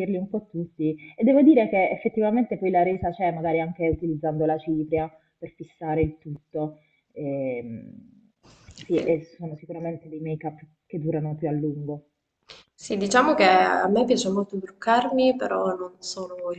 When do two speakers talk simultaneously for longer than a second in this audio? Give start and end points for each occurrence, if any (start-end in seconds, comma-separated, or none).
none